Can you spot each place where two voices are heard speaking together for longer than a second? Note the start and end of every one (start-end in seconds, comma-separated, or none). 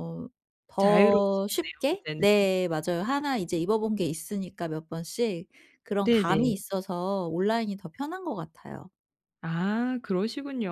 0.8-2.3